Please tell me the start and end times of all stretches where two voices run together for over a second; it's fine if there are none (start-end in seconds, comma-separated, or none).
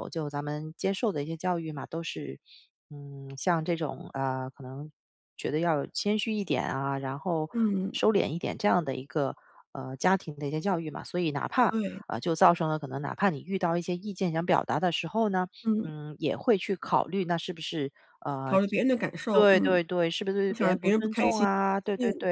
20.5-21.8